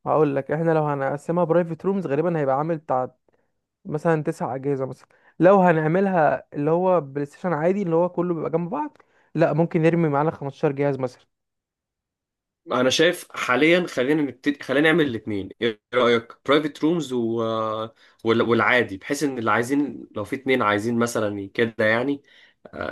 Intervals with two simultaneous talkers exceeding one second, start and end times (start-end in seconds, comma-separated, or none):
none